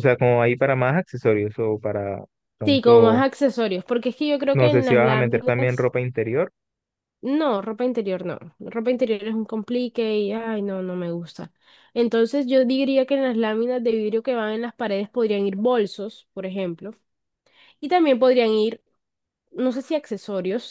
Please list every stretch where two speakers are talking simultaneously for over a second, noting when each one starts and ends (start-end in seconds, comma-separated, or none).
4.5-5.9